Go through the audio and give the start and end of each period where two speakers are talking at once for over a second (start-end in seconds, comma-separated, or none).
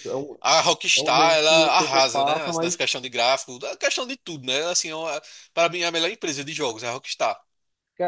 1.0-2.8